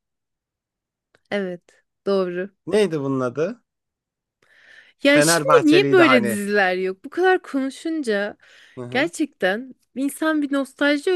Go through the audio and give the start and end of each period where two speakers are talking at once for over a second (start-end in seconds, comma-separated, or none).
5.0-6.4